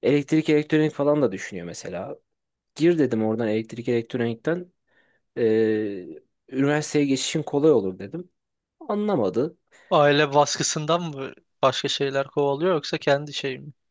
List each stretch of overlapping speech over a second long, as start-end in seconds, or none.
none